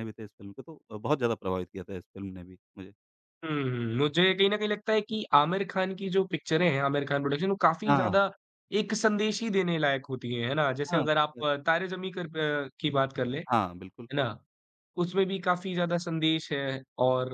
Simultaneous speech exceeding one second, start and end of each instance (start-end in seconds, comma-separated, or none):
none